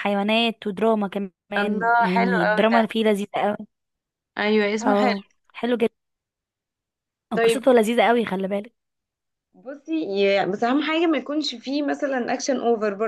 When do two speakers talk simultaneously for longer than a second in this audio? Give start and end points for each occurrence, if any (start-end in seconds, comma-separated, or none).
1.6-2.8